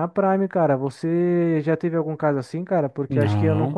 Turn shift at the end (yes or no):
no